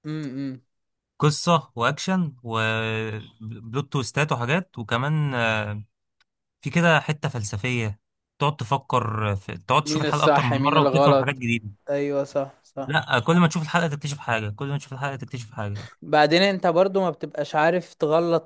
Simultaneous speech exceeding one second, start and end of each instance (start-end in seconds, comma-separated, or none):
9.8-11.4